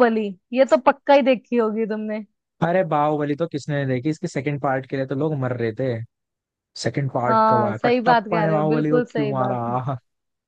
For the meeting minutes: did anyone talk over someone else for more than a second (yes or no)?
yes